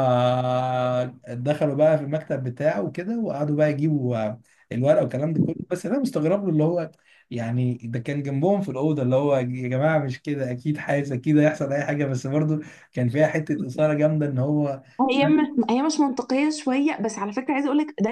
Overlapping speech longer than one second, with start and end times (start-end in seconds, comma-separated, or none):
none